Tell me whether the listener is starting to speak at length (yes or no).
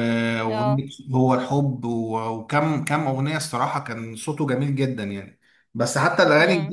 no